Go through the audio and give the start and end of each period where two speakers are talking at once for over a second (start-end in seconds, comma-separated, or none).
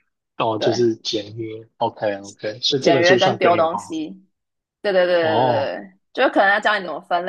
2.8-4.0